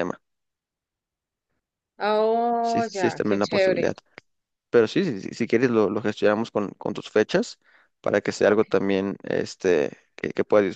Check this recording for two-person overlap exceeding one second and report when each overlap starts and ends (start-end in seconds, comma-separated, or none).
2.6-3.9